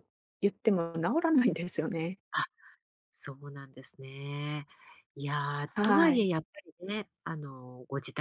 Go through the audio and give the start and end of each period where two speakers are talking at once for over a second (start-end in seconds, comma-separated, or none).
none